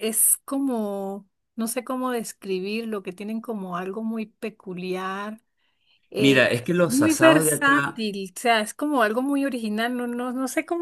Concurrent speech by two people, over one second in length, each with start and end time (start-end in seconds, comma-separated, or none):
6.2-8.1